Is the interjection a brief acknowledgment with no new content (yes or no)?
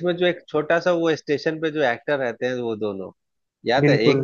yes